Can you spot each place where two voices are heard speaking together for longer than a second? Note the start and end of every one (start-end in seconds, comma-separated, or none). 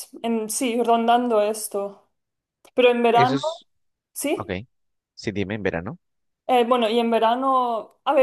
none